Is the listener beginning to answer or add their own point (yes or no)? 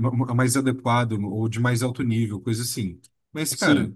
no